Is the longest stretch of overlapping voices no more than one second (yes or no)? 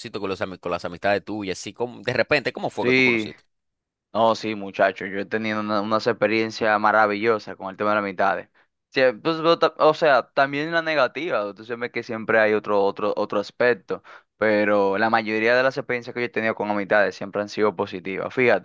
yes